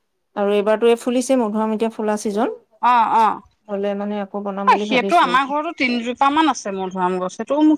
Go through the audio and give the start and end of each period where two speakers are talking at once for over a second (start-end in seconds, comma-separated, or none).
none